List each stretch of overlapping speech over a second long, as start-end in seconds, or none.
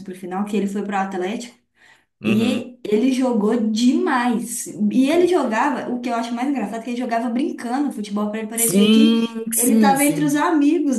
8.5-10.4